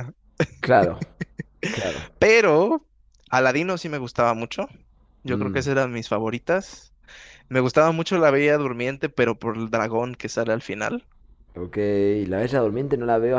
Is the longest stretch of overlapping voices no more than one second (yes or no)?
yes